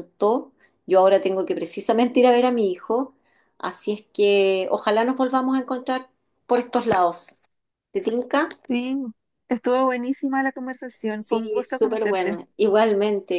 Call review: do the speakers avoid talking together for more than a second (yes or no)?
no